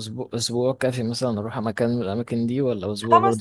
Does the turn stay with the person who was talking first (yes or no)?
no